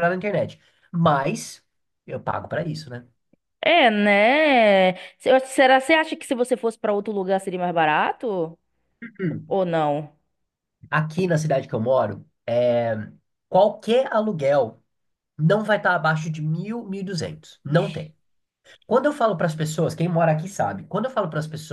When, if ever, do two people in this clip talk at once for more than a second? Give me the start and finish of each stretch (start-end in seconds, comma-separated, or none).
none